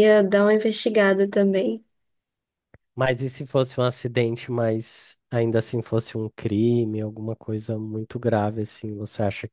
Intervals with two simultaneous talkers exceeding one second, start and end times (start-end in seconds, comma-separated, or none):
none